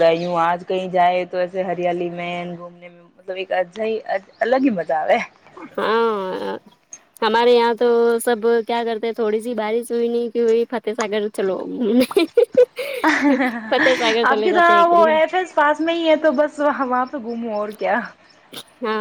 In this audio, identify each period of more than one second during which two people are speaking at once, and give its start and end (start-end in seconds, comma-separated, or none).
13.7-15.3